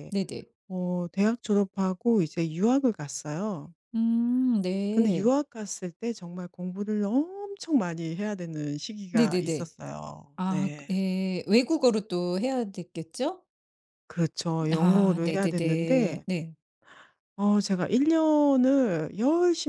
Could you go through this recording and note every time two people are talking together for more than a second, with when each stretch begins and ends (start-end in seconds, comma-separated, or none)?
14.7-16.2